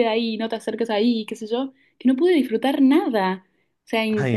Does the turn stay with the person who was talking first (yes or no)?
yes